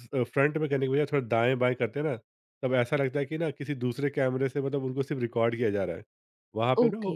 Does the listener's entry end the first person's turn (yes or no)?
no